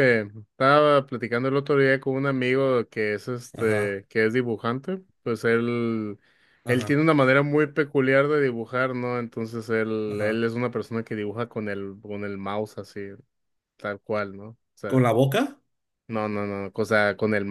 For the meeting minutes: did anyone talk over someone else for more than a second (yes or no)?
no